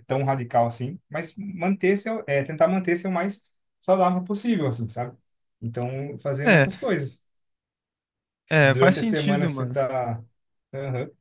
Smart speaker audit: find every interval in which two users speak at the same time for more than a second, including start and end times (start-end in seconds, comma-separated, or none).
8.5-9.8